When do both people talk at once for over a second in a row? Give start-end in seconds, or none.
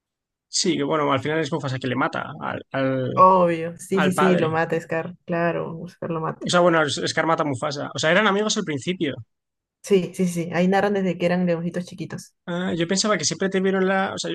none